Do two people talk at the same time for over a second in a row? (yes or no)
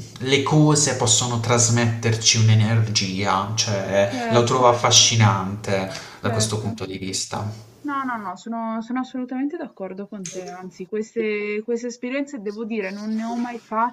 no